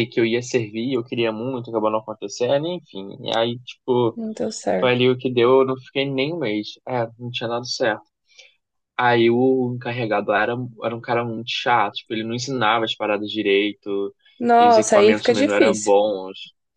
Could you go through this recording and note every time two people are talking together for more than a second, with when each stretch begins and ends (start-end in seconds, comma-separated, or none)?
14.6-15.9